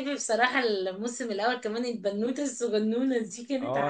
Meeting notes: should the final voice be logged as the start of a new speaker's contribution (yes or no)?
yes